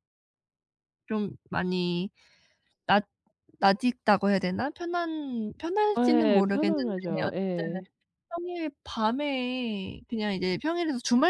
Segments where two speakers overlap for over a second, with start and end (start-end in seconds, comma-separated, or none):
5.9-7.8